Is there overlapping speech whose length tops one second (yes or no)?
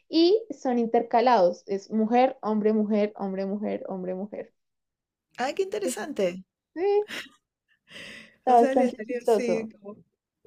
yes